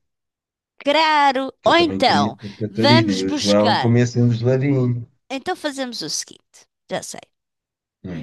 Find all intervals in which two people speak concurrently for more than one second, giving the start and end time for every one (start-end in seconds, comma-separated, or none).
1.6-3.9